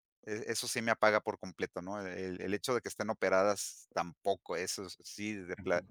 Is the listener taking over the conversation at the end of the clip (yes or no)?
no